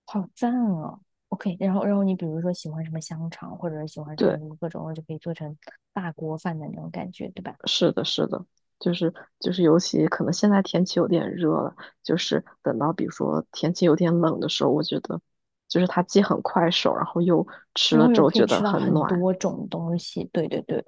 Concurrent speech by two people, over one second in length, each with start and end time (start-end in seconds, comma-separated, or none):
17.9-19.2